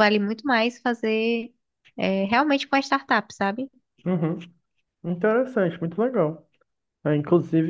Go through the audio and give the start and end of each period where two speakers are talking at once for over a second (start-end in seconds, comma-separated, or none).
none